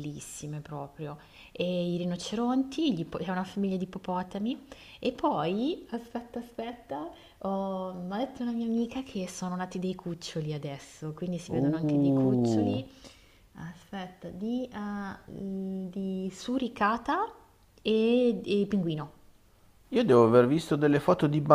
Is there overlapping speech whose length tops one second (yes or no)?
yes